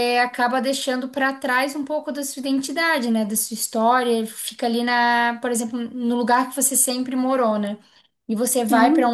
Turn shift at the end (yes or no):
no